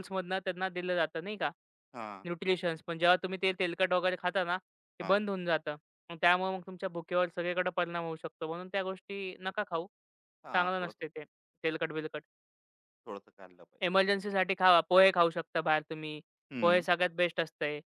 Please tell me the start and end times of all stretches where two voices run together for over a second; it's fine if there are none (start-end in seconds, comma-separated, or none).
none